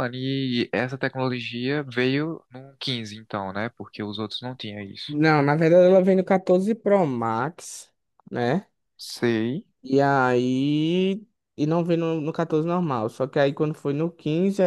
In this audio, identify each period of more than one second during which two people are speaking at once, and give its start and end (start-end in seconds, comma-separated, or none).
none